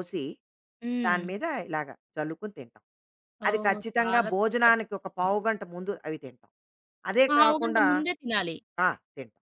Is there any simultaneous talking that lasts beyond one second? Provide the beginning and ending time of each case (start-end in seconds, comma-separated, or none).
3.5-5.3